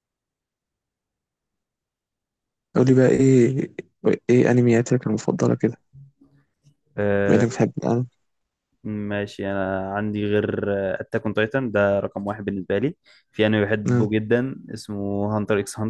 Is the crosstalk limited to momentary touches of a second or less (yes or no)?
yes